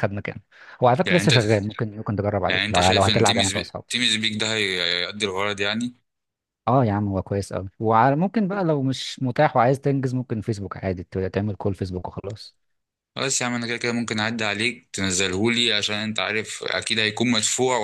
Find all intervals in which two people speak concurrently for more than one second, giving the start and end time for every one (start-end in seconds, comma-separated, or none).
2.5-4.0